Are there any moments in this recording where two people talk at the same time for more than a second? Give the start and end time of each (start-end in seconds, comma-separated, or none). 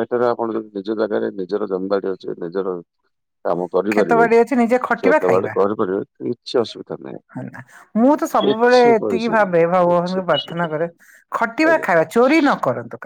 8.4-10.7